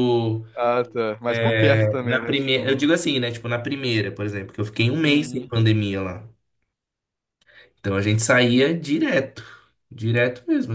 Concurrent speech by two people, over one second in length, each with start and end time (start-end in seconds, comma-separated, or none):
1.3-2.9